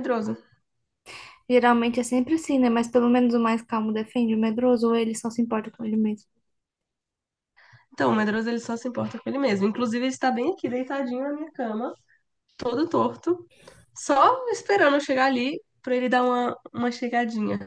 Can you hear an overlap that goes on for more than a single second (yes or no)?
no